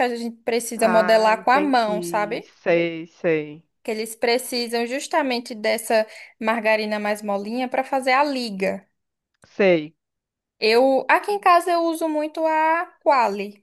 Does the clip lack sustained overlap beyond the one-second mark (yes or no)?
no